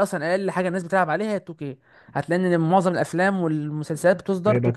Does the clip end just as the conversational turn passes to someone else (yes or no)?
yes